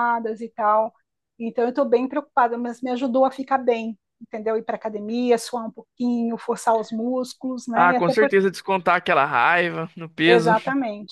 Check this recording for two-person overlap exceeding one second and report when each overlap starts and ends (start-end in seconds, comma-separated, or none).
none